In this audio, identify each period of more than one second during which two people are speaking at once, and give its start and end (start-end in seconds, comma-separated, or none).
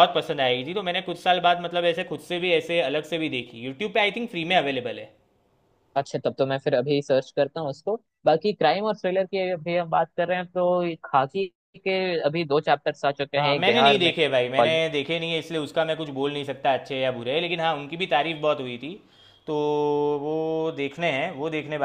13.4-14.8